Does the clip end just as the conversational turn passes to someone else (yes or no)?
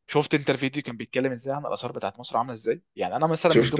no